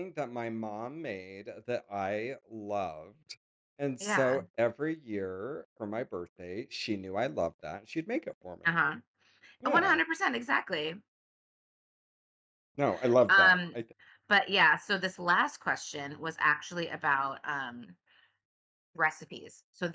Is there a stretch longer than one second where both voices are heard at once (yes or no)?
no